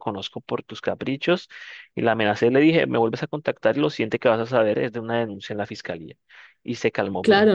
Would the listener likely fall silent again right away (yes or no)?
no